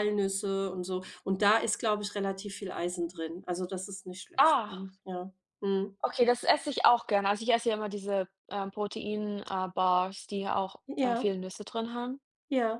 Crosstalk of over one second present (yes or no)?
no